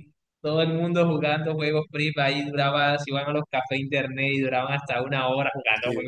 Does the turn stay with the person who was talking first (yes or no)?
no